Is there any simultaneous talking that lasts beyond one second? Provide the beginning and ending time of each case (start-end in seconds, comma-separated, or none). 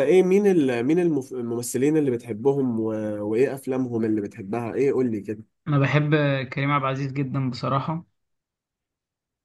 none